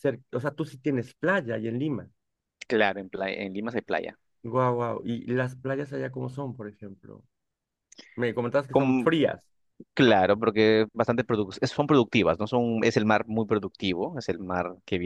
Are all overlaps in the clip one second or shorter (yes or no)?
yes